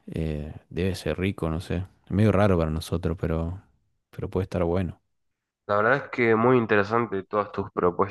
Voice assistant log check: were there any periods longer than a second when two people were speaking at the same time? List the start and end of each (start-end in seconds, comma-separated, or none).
none